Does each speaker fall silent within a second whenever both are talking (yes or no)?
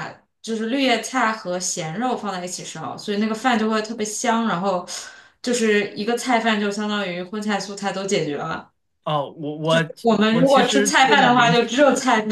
no